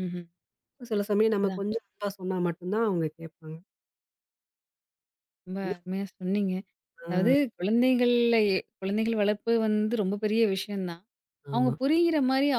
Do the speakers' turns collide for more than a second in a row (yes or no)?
no